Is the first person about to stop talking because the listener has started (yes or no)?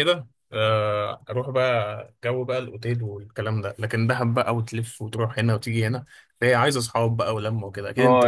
yes